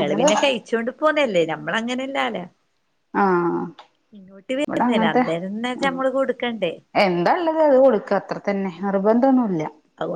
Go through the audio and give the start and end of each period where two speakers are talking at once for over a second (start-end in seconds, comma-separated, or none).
none